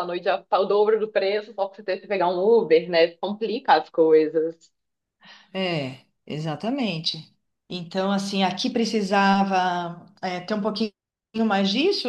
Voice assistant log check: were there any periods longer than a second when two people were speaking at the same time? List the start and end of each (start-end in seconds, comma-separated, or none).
none